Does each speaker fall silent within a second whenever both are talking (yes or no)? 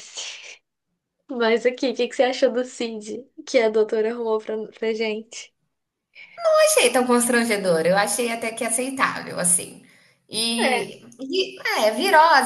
yes